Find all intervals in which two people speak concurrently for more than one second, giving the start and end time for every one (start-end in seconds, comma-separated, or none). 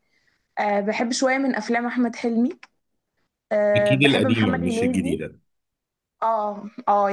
3.8-5.2